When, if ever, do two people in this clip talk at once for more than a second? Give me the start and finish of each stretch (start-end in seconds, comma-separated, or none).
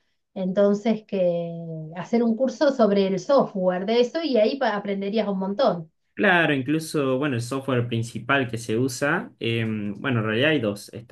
none